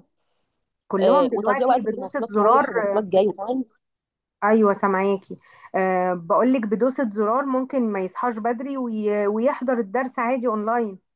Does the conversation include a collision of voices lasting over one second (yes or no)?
yes